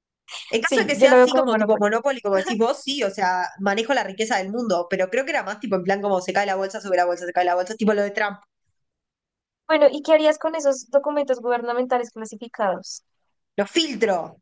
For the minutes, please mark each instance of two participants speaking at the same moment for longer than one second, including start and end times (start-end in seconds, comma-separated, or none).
0.6-1.9